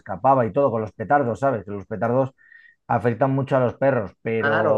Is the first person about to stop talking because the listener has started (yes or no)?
yes